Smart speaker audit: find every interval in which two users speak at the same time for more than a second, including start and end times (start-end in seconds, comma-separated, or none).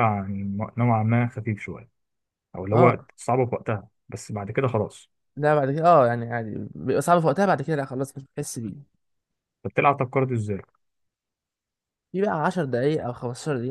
none